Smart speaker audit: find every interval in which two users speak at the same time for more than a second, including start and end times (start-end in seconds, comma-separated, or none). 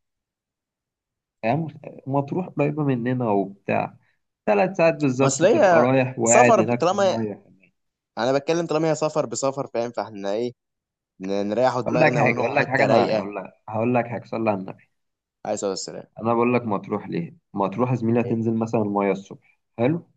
5.2-7.2, 11.8-13.3